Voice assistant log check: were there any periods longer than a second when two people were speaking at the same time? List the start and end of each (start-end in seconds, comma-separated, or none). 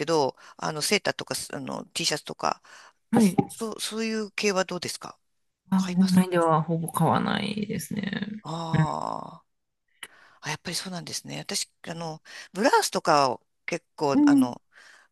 none